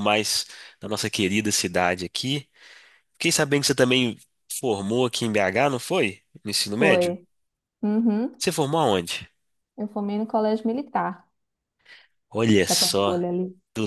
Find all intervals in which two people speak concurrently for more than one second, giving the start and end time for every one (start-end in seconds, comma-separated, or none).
none